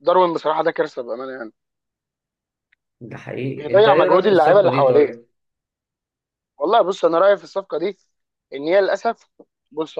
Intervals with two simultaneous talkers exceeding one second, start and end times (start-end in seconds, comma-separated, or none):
3.5-5.1